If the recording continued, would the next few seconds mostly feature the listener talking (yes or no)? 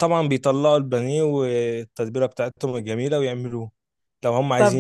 no